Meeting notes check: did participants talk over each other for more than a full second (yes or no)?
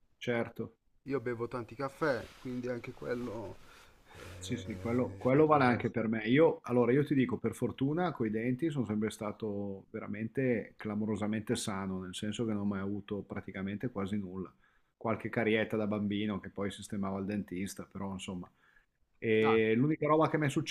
yes